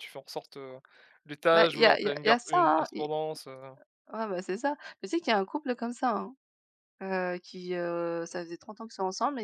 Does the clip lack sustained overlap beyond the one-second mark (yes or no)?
no